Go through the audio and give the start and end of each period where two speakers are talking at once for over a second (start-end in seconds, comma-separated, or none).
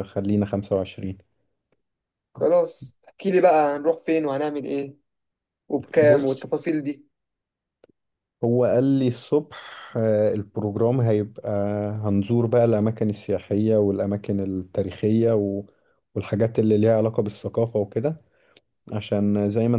none